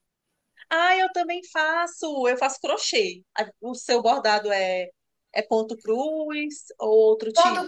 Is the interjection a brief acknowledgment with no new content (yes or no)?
no